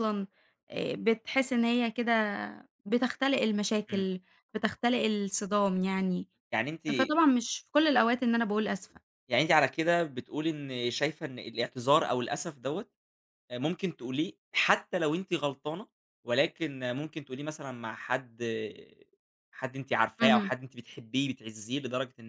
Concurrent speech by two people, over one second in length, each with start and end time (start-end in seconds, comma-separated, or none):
none